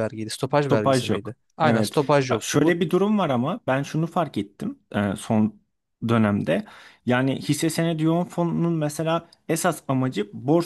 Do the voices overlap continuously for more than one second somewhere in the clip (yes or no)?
yes